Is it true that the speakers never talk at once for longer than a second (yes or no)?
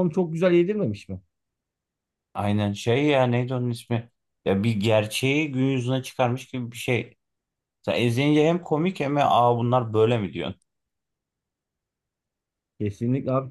yes